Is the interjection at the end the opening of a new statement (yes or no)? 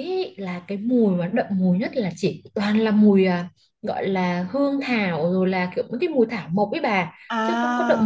no